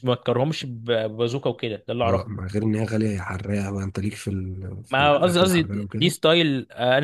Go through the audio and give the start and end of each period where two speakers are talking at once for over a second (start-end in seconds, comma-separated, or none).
4.9-6.1